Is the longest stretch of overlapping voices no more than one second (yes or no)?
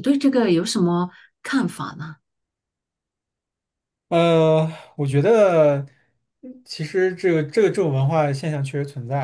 yes